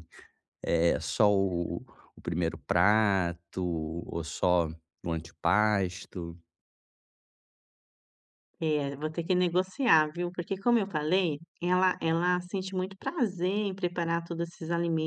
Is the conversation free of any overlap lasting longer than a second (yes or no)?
yes